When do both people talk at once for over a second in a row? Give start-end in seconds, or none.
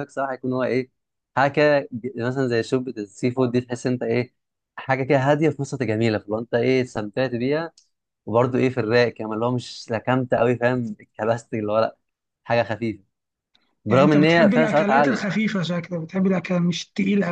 13.9-15.2